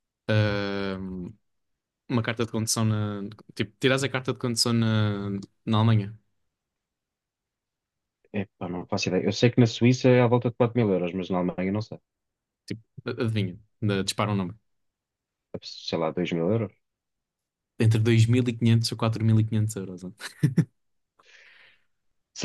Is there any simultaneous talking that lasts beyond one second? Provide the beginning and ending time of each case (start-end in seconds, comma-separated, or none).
none